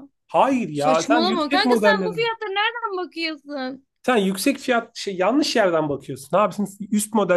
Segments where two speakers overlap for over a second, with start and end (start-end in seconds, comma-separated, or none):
0.7-2.2